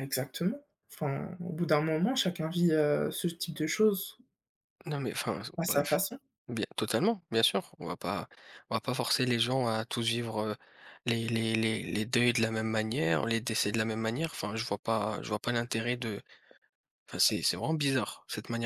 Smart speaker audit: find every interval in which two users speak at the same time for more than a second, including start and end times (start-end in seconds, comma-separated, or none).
none